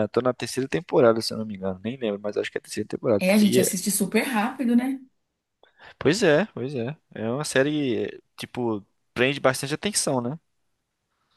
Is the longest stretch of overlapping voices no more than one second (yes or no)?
yes